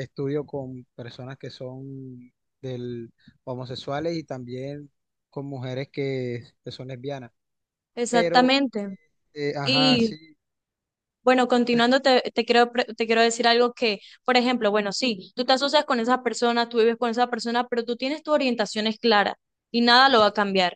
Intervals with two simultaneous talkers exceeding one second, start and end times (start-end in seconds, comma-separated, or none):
none